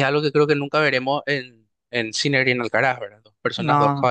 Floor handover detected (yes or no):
no